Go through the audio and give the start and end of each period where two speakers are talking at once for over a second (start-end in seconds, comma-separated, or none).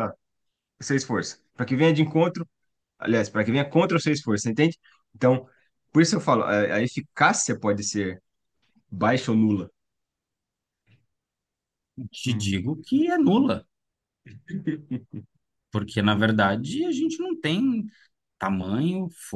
none